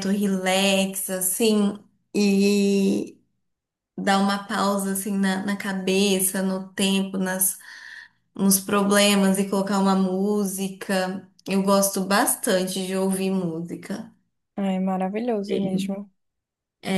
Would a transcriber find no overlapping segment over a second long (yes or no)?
yes